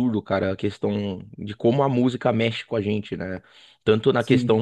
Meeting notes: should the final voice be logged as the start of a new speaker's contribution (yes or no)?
no